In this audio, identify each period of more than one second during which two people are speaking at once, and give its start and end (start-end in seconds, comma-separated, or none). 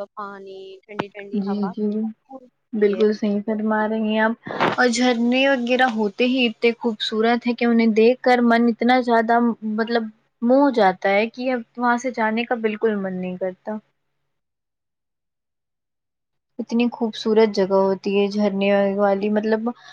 none